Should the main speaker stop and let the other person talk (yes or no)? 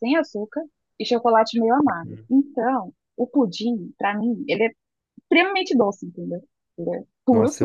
yes